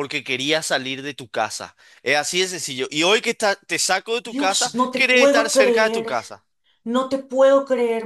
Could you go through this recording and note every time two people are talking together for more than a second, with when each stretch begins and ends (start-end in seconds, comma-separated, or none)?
4.2-6.1